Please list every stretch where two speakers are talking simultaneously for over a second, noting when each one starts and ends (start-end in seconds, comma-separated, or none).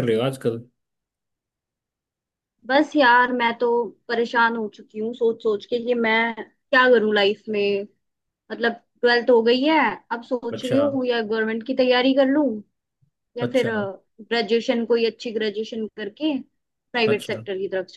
none